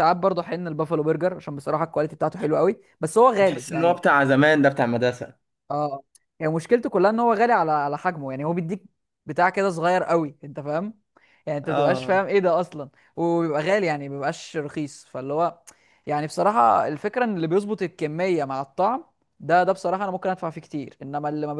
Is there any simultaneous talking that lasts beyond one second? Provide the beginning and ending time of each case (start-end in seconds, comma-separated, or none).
none